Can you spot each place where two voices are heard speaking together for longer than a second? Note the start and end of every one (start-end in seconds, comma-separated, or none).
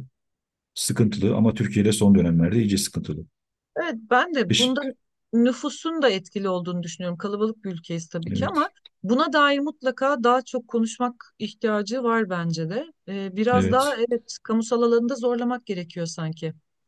none